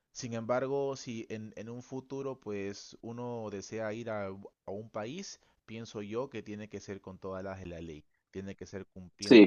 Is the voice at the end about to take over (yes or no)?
yes